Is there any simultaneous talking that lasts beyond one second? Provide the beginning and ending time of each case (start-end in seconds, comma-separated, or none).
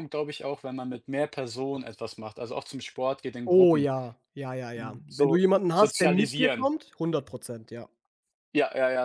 4.7-6.7